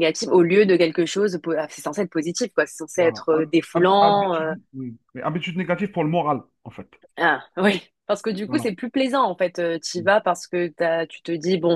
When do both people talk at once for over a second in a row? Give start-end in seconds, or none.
3.0-4.5